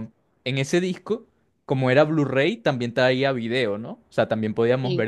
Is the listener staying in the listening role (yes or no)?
yes